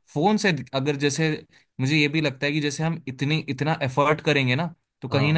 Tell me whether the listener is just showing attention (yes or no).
yes